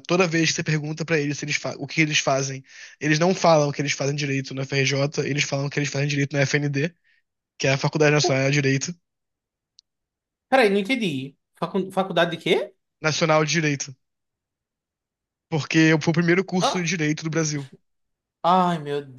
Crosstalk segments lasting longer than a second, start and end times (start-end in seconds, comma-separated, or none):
none